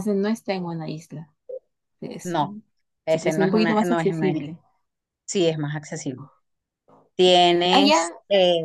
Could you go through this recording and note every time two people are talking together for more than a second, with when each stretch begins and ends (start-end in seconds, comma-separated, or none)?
3.1-4.5